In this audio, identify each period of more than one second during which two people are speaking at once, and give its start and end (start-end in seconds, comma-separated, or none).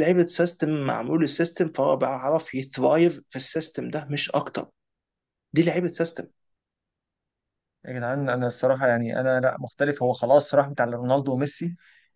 none